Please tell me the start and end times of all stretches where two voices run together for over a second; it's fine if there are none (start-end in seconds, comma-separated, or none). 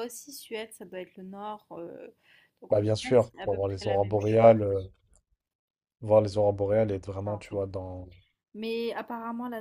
2.7-4.5